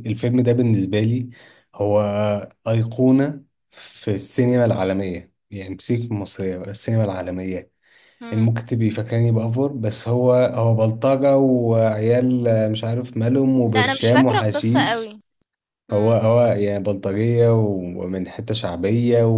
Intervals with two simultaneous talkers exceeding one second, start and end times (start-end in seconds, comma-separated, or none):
13.8-15.1